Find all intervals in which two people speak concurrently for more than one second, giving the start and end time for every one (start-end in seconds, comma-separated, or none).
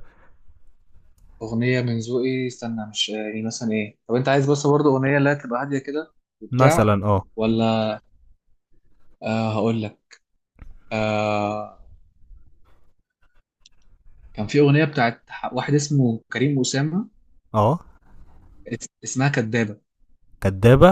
none